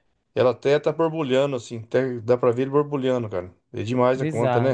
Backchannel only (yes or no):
no